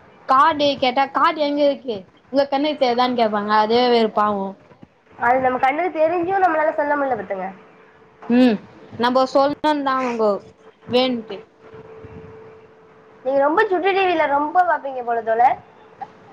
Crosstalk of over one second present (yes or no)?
no